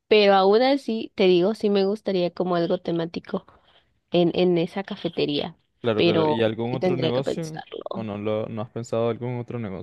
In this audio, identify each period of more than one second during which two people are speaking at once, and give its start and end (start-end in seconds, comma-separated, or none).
6.0-8.1